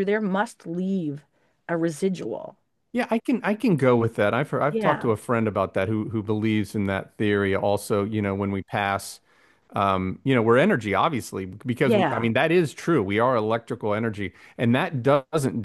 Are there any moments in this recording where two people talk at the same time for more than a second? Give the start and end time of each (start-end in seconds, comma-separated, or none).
none